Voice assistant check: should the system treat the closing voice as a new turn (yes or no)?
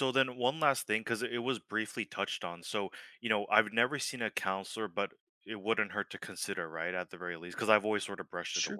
yes